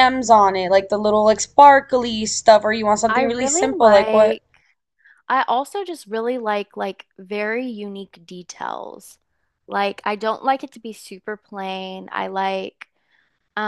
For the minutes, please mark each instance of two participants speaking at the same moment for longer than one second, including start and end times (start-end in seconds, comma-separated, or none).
3.1-4.4